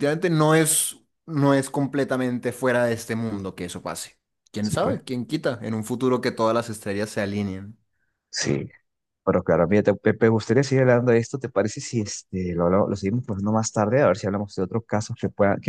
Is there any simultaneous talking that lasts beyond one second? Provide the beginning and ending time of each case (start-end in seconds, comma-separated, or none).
none